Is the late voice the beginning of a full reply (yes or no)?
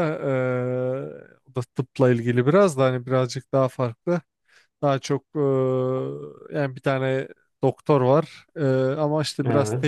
no